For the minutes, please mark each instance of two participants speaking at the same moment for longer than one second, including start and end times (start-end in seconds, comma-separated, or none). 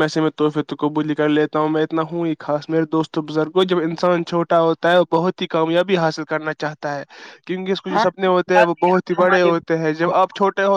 7.9-9.6